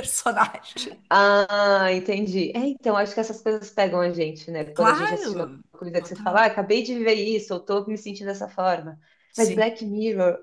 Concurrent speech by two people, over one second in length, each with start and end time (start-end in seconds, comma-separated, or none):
4.7-6.4